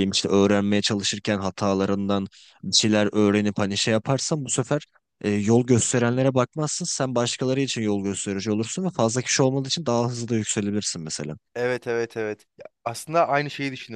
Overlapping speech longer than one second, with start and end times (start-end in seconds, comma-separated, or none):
none